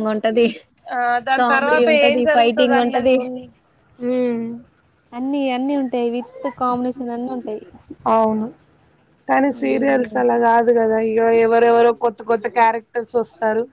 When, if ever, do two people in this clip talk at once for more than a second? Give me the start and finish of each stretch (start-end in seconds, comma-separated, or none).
1.4-3.2